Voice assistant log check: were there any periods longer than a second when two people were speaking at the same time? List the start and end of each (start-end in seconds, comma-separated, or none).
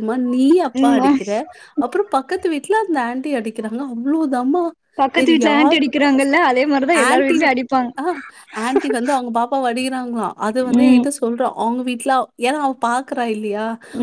none